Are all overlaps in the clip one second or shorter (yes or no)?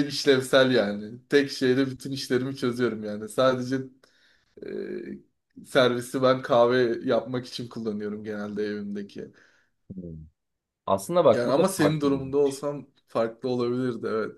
no